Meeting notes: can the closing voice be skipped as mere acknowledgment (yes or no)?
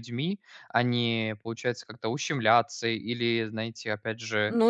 no